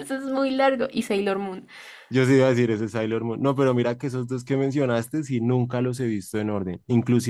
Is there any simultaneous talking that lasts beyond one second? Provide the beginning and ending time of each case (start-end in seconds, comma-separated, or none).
none